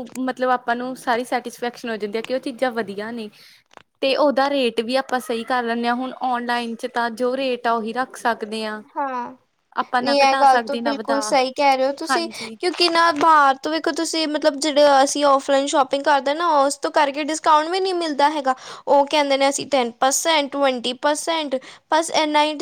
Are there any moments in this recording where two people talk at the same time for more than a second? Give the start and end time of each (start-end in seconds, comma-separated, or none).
none